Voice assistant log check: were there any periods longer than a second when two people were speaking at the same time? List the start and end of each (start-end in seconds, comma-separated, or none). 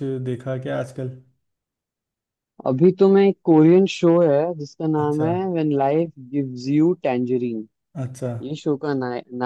none